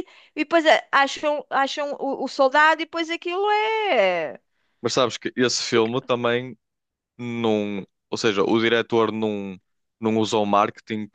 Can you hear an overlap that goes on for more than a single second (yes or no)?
no